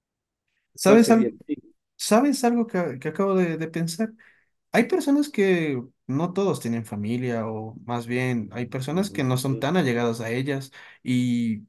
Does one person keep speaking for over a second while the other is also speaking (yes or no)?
yes